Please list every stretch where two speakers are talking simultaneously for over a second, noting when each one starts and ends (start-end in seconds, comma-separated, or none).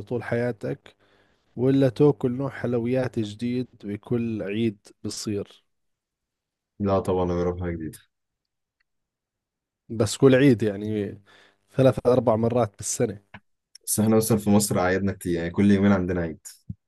none